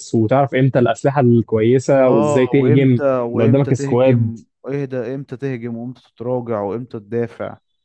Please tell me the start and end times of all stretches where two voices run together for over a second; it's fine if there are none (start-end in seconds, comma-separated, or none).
2.1-4.3